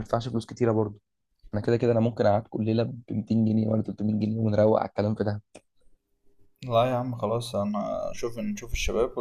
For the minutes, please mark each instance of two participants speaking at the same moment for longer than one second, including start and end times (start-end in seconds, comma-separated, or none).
none